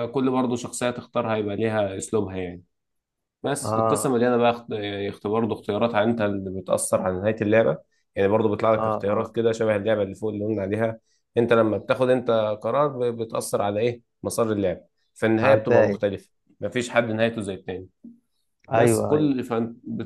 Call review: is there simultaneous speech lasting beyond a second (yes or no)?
no